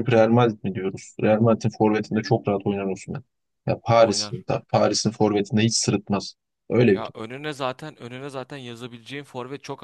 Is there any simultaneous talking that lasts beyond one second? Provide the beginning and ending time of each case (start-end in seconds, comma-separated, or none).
none